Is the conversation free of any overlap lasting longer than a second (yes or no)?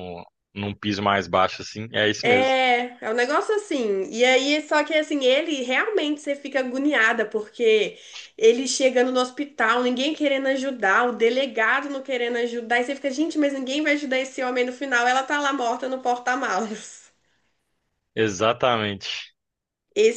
yes